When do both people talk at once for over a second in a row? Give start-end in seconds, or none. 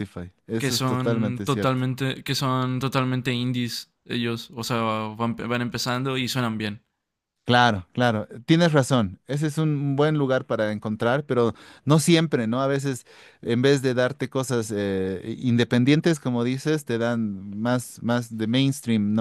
0.6-1.8